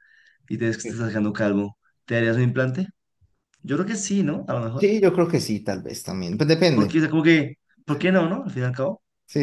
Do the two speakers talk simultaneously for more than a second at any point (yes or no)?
no